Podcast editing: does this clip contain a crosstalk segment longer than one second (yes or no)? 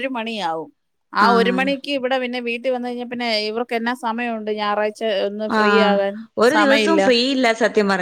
no